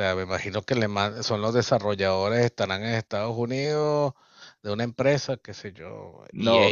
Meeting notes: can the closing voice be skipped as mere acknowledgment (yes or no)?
no